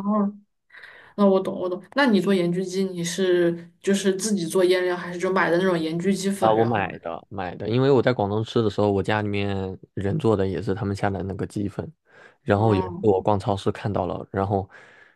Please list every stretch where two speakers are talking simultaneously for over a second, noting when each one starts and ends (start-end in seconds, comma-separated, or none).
none